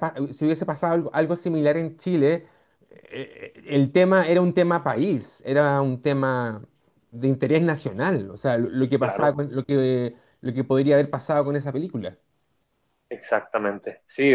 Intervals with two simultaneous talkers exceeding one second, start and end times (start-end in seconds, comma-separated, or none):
none